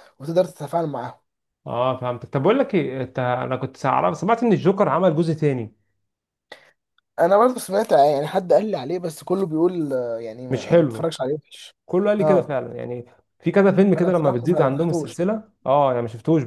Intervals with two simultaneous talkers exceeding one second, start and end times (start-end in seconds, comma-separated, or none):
13.9-15.2